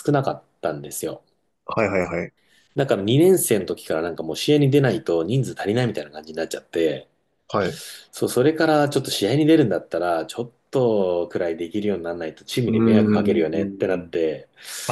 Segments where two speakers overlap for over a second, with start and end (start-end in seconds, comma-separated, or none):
12.7-14.1